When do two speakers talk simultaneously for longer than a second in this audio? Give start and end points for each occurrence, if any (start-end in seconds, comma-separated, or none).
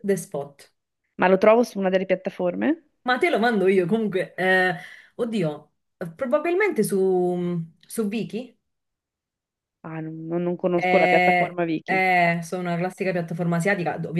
10.7-12.0